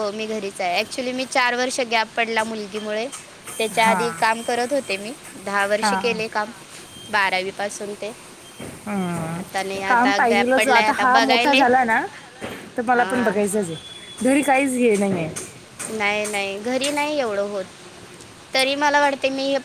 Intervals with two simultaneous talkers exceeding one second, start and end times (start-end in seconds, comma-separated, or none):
9.4-11.6